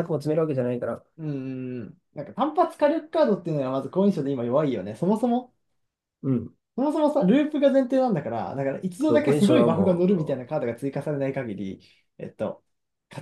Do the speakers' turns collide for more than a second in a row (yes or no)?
yes